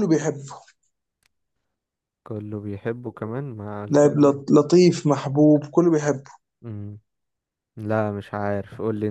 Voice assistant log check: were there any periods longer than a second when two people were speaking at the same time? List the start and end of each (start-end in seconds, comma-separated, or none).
none